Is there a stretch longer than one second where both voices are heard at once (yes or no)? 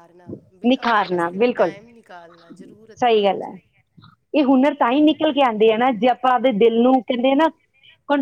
no